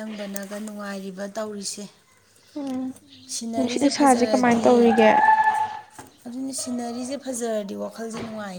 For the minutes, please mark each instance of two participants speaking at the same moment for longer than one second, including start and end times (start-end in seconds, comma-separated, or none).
3.5-4.9